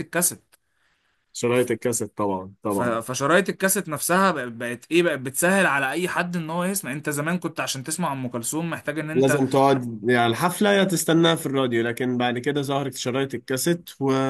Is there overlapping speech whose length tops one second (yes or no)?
no